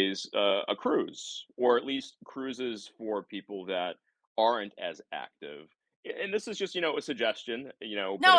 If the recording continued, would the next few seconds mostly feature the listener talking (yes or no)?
yes